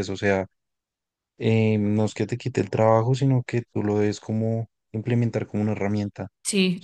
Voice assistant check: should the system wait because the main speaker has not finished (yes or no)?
no